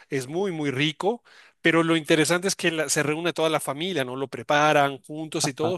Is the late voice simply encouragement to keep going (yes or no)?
yes